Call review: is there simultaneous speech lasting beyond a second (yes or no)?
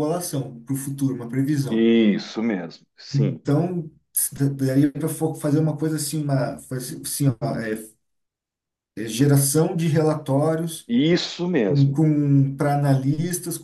no